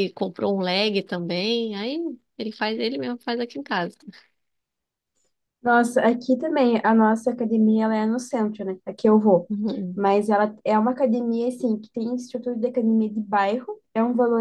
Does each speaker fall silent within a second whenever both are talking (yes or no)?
yes